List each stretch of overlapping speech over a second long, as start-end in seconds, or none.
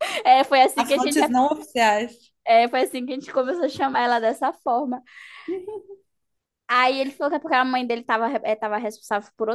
none